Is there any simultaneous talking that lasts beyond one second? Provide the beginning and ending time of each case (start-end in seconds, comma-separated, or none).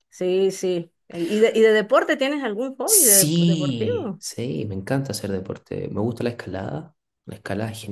2.9-4.2